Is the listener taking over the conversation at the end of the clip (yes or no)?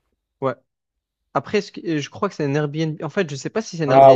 yes